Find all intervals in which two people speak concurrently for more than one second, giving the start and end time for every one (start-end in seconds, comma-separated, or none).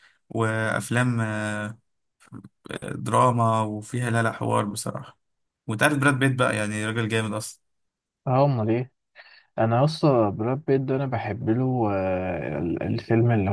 none